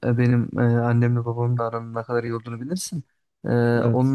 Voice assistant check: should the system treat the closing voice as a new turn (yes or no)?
no